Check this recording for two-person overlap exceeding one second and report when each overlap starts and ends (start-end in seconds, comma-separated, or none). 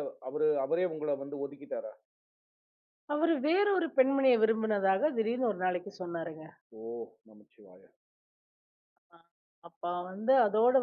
none